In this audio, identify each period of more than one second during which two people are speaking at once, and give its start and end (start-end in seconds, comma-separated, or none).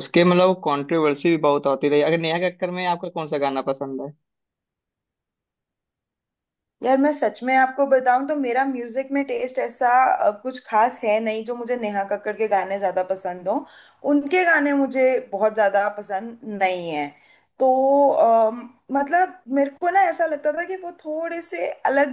none